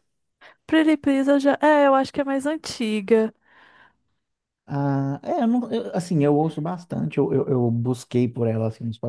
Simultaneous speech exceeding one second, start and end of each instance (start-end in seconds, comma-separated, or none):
none